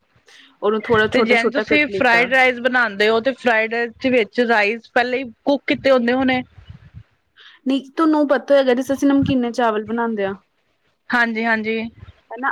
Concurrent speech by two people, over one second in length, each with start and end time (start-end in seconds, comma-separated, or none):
none